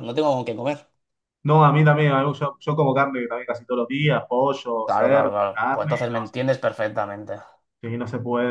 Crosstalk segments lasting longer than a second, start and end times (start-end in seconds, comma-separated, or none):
4.8-6.2